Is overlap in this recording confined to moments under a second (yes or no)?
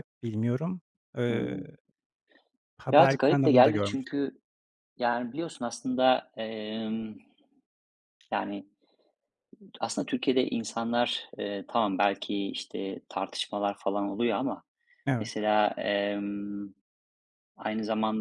no